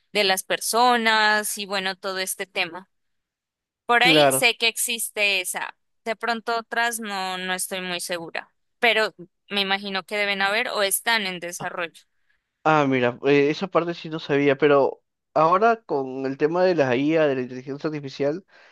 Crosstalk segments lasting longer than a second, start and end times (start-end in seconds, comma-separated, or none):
none